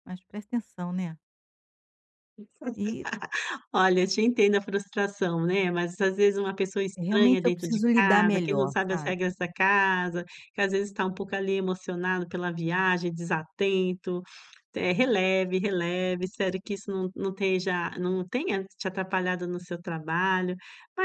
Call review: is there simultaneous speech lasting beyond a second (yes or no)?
yes